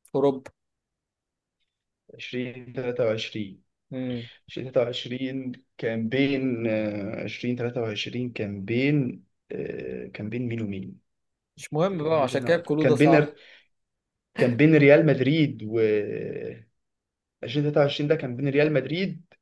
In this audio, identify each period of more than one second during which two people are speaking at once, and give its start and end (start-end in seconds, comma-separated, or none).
11.9-13.1